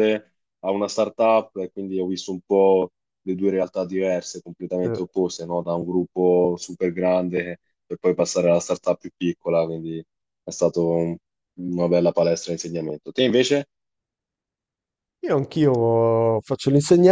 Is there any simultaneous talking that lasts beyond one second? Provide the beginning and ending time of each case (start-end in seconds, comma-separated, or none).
none